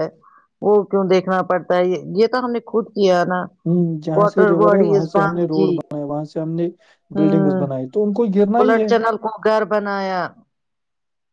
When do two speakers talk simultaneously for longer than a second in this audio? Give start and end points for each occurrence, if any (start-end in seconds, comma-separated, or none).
4.2-5.7